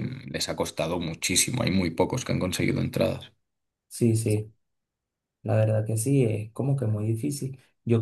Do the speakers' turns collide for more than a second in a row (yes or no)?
no